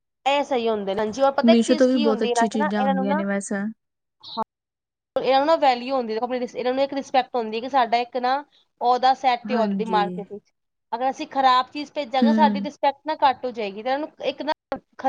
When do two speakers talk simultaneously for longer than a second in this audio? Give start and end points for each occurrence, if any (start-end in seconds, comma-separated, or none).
1.5-3.2